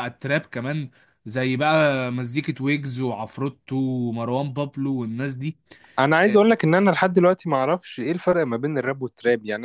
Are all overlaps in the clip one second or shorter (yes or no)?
yes